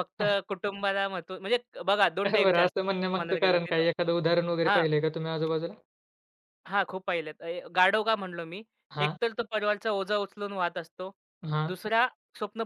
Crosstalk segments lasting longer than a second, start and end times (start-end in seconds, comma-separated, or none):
2.3-3.9